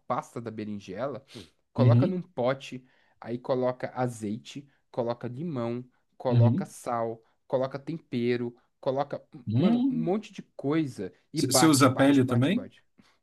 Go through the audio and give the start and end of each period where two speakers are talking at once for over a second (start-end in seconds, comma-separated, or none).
11.3-12.7